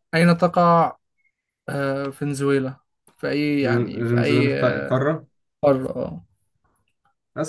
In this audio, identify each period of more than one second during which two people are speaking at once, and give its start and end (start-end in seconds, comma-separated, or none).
3.6-5.0